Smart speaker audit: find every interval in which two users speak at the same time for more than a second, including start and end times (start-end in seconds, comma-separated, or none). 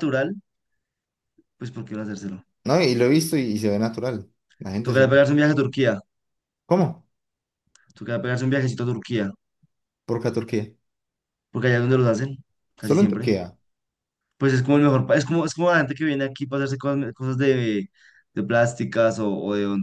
none